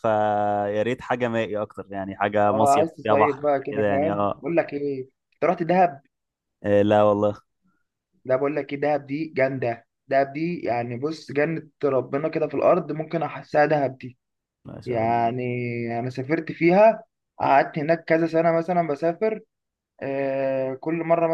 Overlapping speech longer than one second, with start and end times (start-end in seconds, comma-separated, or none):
2.5-4.4